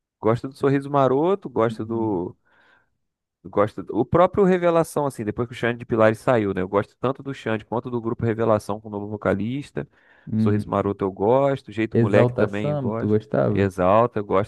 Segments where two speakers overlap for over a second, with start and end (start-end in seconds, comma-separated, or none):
11.9-13.7